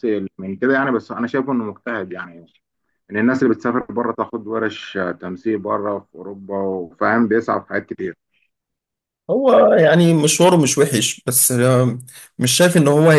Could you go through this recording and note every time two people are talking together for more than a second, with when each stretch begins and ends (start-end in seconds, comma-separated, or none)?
none